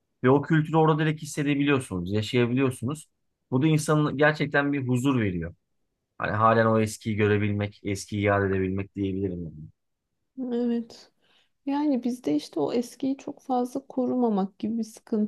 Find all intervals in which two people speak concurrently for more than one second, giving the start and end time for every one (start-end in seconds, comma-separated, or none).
none